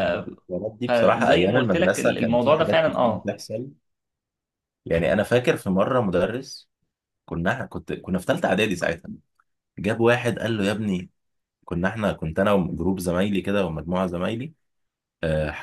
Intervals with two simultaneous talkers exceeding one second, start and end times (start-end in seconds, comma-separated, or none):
0.8-3.4